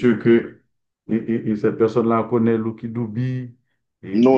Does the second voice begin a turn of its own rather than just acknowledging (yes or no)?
yes